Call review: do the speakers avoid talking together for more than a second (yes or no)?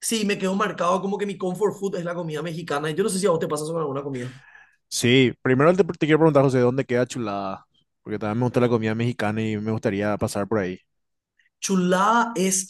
yes